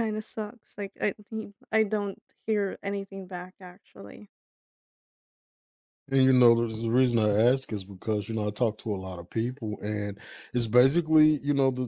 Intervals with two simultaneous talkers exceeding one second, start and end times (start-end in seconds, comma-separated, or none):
none